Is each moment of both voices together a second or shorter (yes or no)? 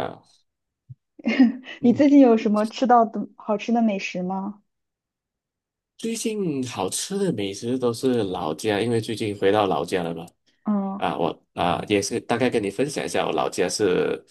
yes